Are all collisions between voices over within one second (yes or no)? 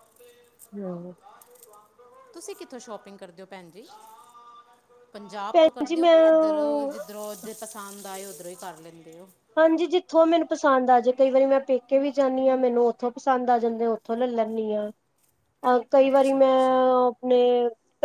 yes